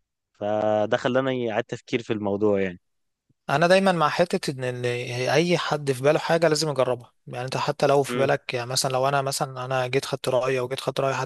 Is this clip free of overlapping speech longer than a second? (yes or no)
yes